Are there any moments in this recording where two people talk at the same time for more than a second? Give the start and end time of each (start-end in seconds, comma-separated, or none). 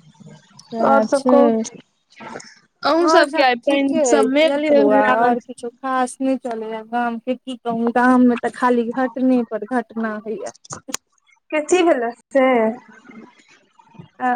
3.1-5.4